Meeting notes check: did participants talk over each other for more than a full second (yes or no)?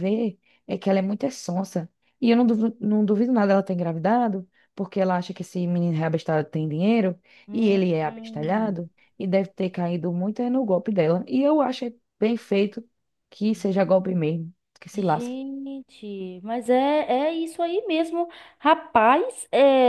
no